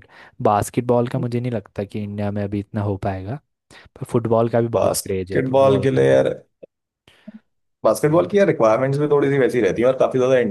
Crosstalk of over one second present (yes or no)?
yes